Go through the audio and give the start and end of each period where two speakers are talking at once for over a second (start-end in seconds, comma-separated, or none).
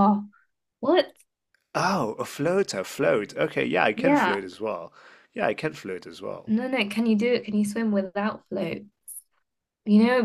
none